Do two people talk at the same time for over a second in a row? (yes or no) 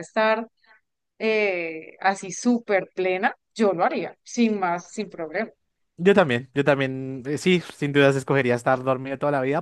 no